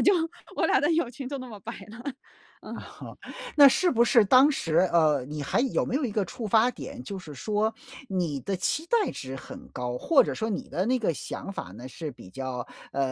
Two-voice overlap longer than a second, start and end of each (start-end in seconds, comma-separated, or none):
none